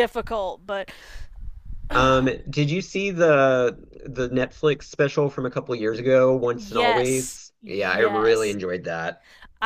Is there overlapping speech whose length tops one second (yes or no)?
yes